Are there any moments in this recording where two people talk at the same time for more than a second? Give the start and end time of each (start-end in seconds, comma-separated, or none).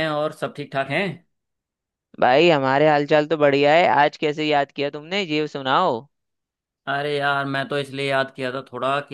none